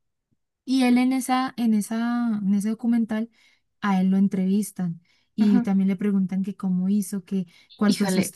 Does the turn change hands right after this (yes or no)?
yes